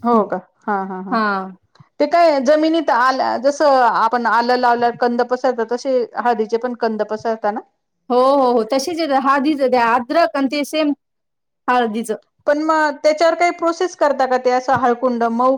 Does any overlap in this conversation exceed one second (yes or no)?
no